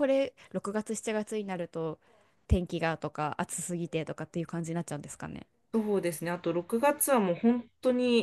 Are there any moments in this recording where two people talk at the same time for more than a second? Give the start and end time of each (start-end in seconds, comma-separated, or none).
none